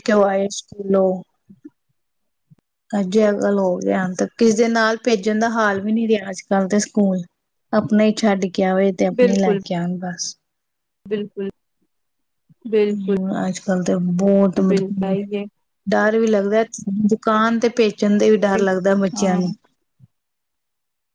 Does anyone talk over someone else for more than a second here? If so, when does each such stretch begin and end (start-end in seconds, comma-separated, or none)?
none